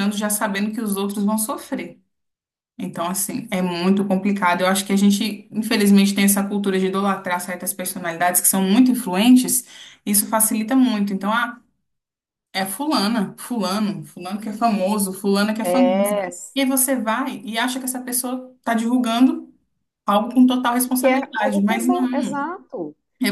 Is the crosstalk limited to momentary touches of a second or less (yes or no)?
no